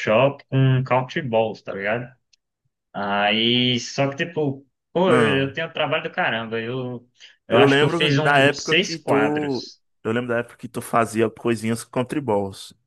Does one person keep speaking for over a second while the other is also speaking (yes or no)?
yes